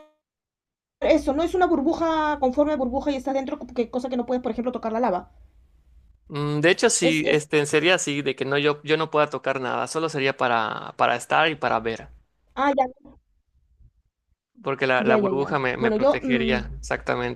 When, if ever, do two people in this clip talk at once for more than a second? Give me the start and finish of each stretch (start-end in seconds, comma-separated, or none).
15.0-16.6